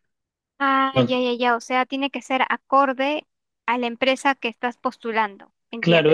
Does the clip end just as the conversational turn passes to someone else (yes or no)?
yes